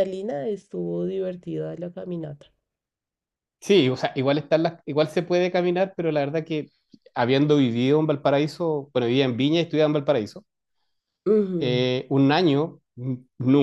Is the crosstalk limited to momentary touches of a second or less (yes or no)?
yes